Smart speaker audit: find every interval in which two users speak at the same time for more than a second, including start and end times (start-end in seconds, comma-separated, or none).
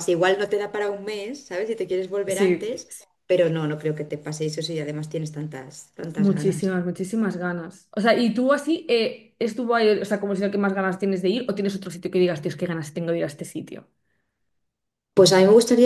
none